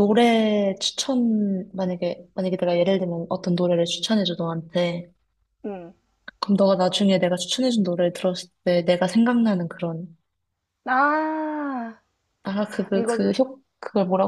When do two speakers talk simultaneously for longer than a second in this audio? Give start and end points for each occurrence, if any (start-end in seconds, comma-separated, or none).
none